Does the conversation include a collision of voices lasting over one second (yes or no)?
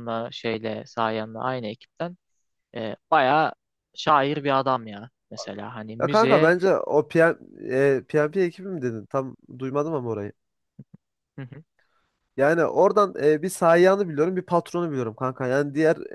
no